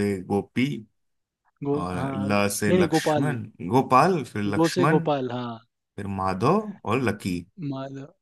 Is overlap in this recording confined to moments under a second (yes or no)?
no